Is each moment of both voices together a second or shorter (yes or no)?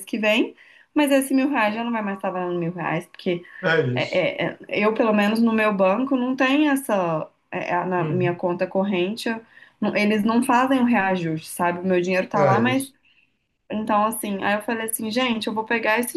yes